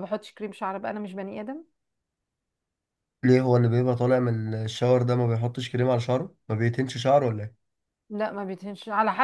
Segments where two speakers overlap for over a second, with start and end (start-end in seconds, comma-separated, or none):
none